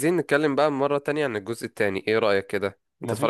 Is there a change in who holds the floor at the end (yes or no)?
yes